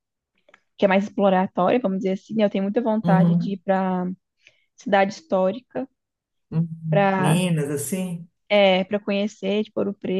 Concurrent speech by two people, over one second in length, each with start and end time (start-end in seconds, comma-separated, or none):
none